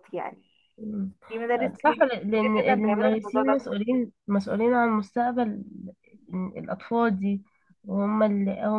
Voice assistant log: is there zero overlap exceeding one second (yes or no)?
no